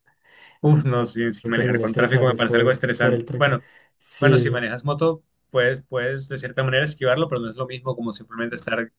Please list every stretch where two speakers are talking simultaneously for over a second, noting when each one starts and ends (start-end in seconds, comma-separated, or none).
1.4-3.6